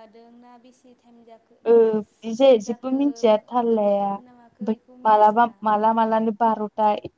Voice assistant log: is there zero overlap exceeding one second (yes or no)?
no